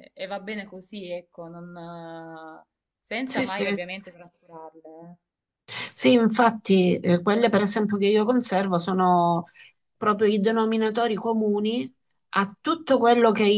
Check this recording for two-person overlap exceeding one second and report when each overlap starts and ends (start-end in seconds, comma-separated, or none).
none